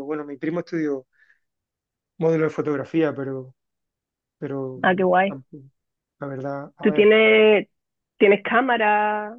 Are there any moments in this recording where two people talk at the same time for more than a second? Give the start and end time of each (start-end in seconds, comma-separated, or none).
none